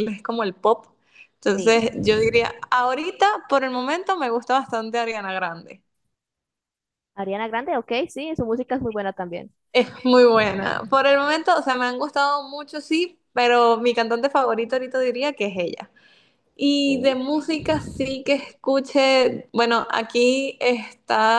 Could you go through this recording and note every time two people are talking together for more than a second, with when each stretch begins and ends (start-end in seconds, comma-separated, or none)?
none